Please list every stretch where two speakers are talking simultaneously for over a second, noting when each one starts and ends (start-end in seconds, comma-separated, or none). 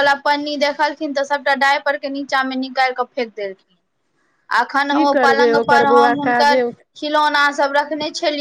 4.9-6.6